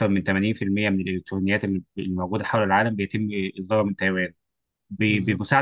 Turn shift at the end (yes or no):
no